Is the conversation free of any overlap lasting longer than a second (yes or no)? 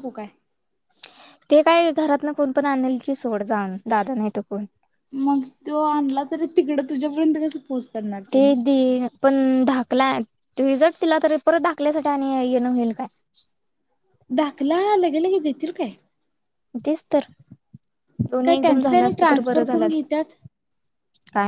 no